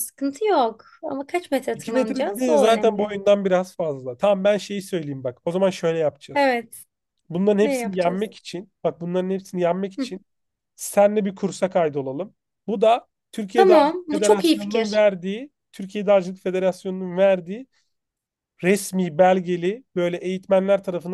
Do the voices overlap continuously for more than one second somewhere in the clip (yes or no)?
yes